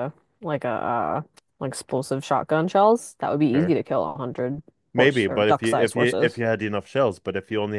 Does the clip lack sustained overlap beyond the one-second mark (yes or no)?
no